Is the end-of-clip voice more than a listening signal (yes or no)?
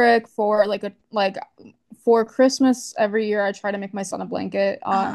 no